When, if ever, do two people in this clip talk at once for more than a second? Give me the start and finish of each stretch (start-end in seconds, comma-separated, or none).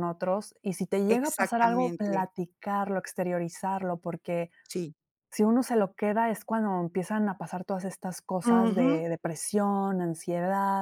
1.1-2.3